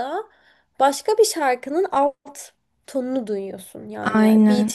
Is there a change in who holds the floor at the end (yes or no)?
no